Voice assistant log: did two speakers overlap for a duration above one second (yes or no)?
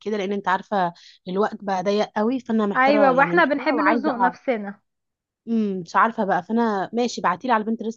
yes